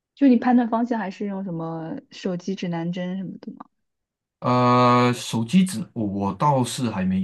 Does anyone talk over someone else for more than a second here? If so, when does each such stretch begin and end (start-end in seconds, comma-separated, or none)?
none